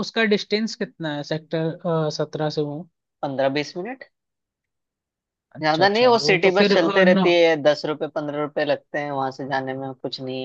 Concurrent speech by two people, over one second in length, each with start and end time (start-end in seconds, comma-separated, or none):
5.6-7.3